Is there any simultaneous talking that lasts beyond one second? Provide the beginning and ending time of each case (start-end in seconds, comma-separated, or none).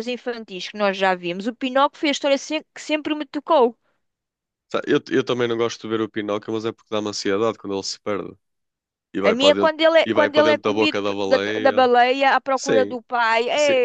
9.3-11.8